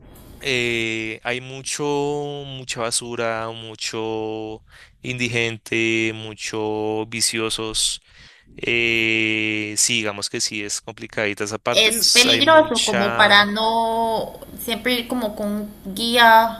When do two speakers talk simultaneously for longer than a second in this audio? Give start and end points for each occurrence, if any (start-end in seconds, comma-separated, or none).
11.7-13.5